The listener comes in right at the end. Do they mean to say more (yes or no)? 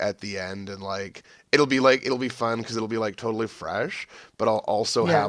no